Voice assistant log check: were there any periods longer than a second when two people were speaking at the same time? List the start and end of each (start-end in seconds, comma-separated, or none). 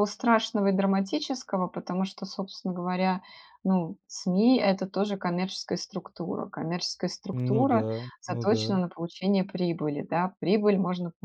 7.3-8.8